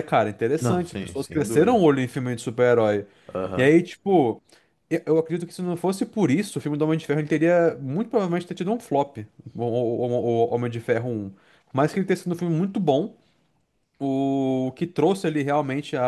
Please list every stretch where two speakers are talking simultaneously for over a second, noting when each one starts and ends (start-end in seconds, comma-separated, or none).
0.6-1.9